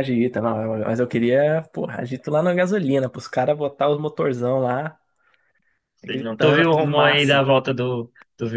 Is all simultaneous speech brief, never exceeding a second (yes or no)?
no